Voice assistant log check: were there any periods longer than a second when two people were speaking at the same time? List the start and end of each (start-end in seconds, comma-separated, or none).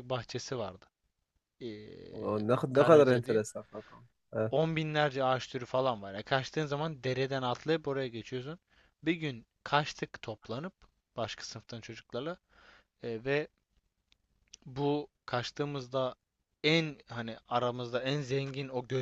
2.1-3.4